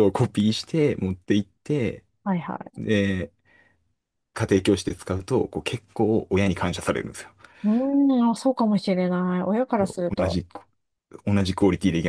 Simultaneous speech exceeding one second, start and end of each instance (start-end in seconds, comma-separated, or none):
none